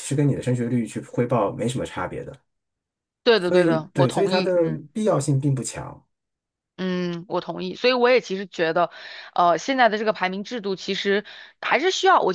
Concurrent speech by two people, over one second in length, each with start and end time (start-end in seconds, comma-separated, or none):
3.4-4.8